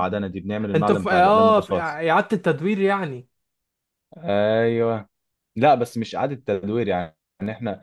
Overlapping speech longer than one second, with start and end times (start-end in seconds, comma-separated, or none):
0.7-2.0